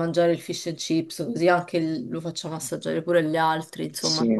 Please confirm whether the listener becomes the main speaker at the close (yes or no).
yes